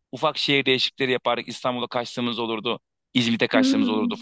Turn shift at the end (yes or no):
no